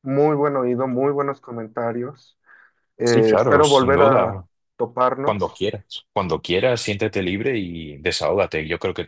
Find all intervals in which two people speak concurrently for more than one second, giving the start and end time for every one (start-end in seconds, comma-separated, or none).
3.0-4.4